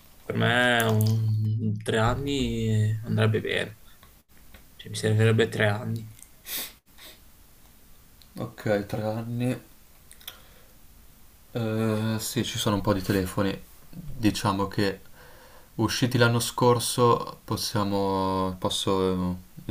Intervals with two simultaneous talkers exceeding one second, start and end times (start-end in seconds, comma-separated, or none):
none